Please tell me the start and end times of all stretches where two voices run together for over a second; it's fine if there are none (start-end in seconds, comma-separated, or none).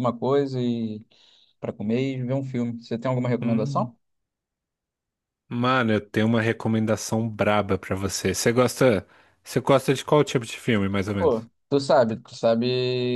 none